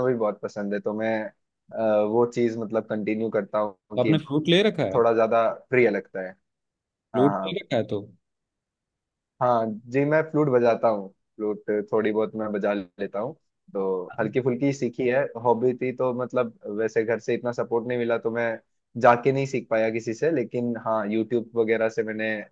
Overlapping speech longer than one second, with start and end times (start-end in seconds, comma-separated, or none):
none